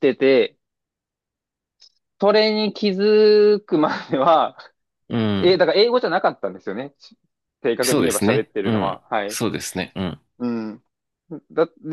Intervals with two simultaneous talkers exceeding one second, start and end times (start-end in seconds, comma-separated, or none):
7.8-9.4